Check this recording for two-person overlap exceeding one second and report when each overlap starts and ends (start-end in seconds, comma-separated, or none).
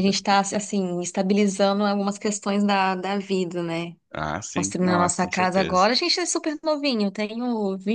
4.5-5.9